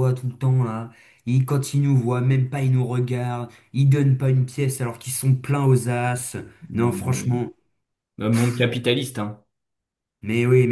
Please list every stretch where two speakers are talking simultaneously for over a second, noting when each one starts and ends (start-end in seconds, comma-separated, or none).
none